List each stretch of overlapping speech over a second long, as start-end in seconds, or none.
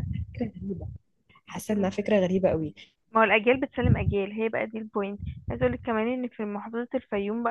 none